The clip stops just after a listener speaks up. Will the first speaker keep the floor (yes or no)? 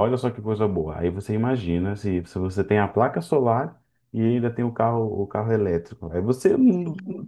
yes